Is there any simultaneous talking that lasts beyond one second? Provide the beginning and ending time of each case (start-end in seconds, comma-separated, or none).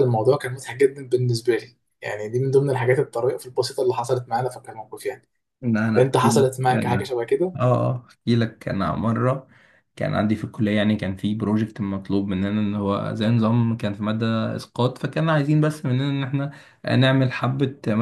none